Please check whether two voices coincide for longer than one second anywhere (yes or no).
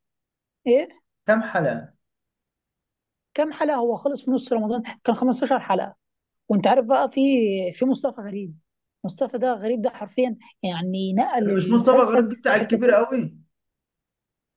yes